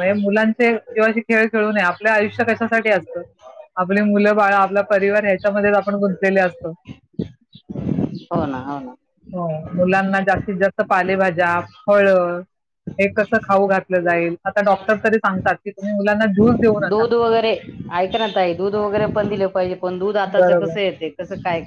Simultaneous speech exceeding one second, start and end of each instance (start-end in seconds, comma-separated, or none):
none